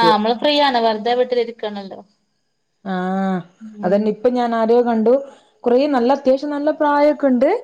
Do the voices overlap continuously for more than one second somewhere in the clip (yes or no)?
no